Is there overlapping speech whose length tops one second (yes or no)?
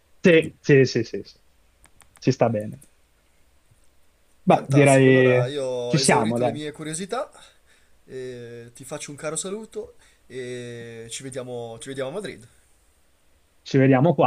yes